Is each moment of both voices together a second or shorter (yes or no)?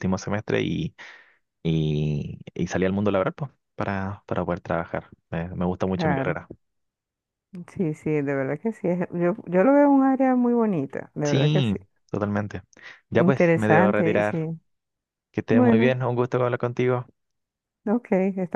no